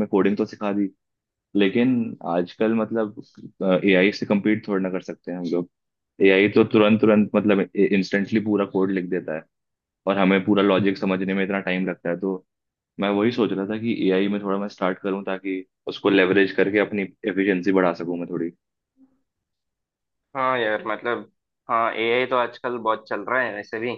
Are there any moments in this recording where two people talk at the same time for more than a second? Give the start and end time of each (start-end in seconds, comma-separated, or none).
none